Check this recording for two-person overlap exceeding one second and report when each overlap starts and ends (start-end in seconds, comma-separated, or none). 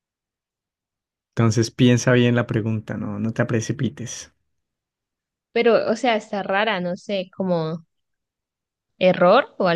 none